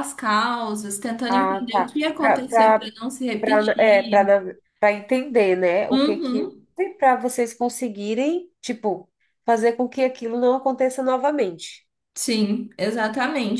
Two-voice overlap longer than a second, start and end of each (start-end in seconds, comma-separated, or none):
1.3-3.1